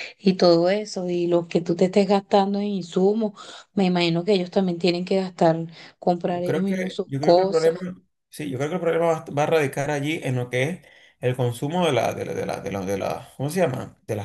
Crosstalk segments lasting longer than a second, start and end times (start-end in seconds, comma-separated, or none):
6.3-7.7